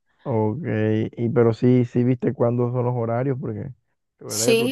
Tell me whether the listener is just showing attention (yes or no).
no